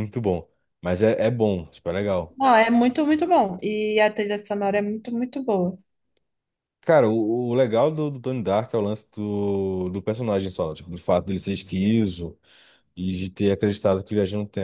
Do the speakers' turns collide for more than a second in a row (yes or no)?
no